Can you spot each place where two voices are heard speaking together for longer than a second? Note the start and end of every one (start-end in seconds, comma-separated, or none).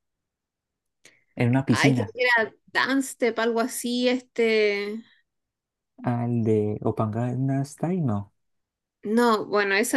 none